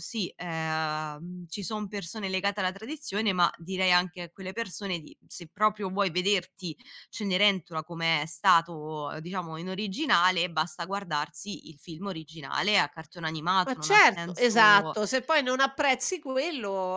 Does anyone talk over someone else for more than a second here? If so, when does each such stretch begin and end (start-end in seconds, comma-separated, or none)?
13.7-15.0